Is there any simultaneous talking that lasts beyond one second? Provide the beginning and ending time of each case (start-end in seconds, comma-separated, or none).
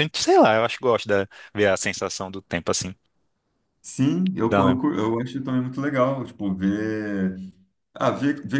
none